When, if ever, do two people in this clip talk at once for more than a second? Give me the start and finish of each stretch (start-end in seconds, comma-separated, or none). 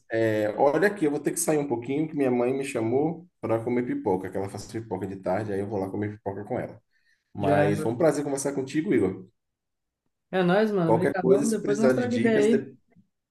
10.8-12.7